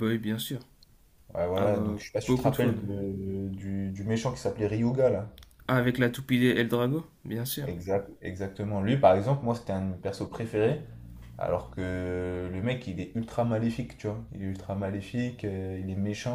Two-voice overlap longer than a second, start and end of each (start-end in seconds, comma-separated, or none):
1.6-2.9